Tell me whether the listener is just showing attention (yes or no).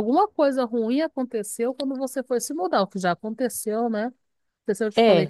yes